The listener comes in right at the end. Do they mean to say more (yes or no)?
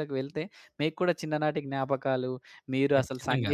no